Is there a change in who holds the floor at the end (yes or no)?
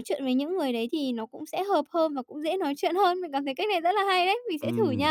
yes